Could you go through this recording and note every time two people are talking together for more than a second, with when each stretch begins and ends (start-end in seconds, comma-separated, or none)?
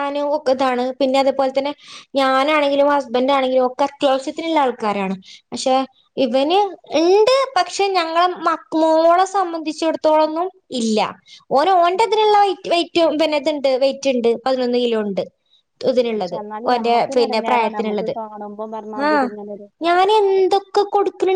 16.2-18.1